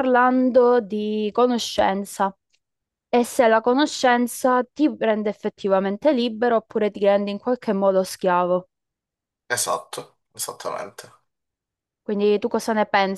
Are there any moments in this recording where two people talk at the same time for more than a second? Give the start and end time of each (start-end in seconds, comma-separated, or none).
none